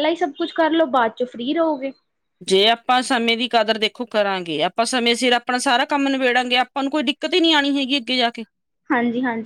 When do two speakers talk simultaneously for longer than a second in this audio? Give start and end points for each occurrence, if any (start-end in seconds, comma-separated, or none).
none